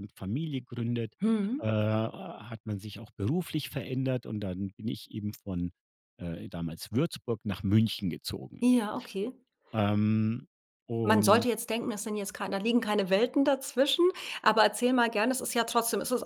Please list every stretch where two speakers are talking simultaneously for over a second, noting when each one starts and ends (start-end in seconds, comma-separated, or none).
none